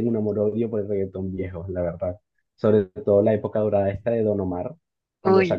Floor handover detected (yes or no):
no